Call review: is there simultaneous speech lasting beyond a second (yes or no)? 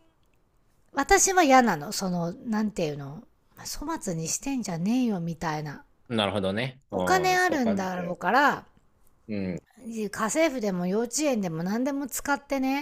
yes